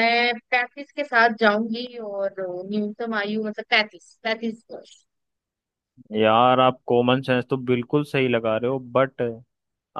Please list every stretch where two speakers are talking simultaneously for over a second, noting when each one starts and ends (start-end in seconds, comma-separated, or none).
none